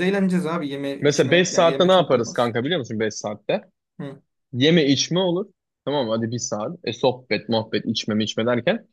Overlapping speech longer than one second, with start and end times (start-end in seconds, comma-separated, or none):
1.0-2.5